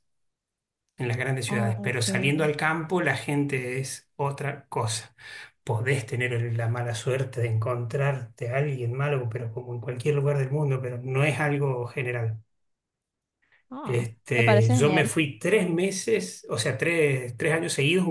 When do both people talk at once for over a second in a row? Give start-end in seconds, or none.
13.8-15.1